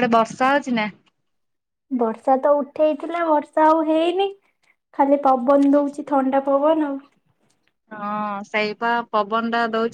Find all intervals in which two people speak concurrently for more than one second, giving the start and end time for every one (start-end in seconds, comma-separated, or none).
none